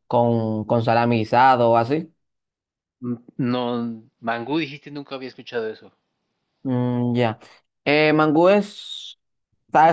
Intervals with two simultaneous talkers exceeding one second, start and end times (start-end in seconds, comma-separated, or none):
none